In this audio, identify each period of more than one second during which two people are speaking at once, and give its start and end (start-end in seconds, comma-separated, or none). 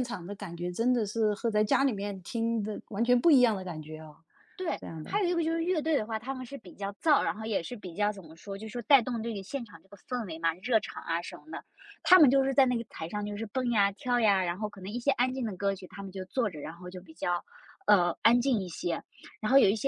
none